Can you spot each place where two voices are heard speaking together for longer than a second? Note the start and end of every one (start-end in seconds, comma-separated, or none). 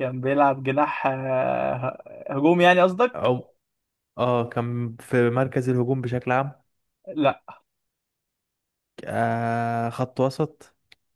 none